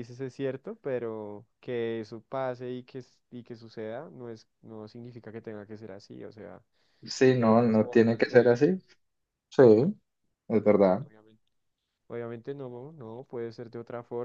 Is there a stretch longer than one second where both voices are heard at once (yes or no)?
yes